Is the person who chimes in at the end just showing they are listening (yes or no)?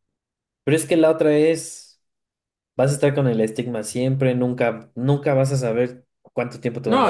no